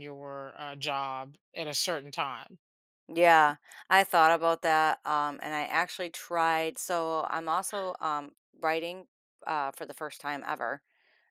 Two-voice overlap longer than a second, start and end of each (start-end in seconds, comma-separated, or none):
none